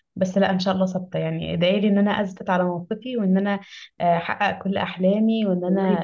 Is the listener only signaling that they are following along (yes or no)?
no